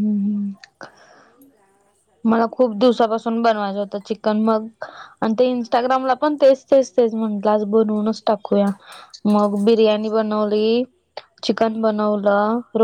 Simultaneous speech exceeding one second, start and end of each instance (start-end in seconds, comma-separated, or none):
2.6-4.3, 5.5-8.3